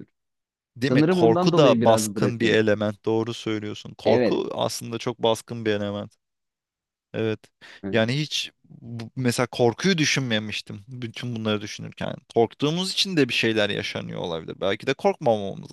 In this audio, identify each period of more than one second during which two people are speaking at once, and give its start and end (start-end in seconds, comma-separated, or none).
0.9-2.6